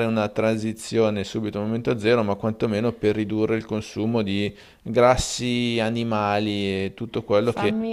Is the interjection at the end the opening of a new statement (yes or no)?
no